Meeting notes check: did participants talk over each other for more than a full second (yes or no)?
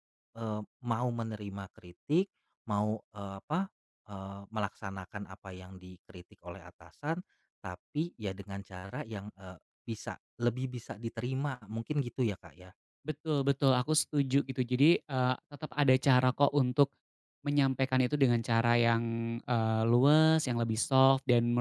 no